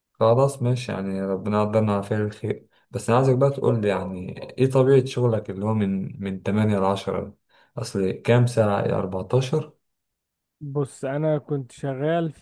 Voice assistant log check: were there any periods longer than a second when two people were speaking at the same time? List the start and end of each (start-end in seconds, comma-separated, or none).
none